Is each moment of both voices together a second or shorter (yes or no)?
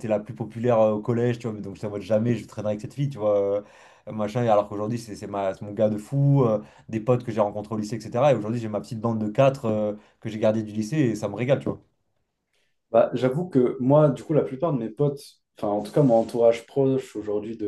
yes